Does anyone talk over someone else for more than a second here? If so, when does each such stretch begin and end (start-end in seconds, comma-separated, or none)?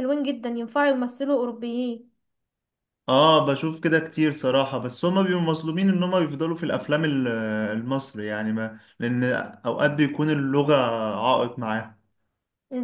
none